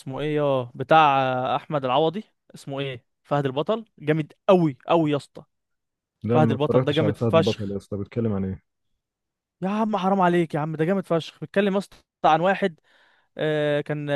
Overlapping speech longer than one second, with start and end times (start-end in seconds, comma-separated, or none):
6.3-7.8